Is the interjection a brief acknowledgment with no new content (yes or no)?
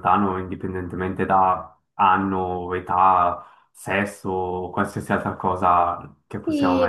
no